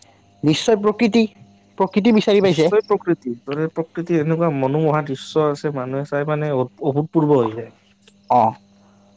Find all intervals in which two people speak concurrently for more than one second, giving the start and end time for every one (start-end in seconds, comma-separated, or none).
none